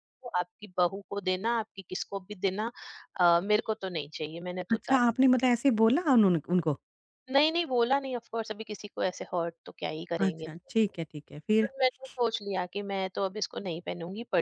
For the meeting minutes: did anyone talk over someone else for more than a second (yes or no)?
no